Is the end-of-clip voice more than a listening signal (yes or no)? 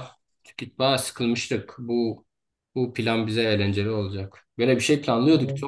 no